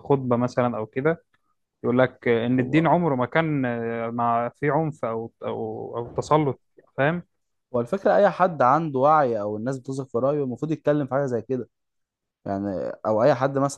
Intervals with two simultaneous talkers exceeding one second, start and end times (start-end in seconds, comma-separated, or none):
none